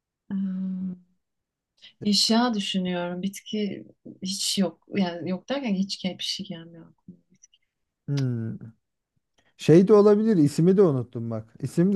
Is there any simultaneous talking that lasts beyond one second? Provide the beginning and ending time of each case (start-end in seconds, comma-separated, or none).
none